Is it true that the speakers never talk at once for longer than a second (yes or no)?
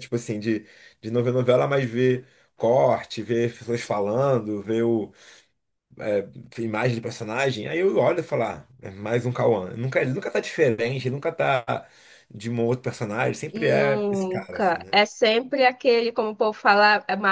no